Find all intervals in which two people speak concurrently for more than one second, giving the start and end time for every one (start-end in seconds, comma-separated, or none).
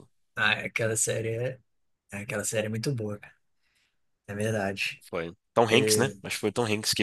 none